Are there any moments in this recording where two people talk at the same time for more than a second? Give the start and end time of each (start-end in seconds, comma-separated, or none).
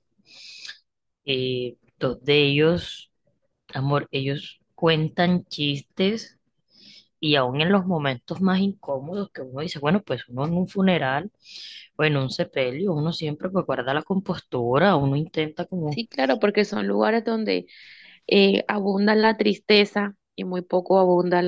none